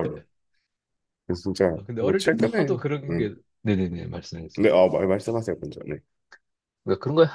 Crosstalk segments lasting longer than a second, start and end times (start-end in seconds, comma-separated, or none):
1.8-3.3